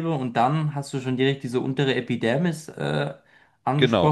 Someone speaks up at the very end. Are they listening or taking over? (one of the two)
taking over